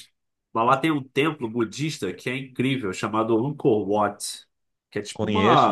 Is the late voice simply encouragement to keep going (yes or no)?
no